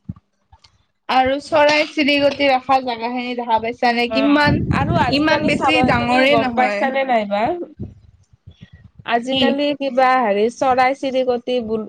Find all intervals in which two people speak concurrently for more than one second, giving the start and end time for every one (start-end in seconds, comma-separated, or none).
5.2-6.9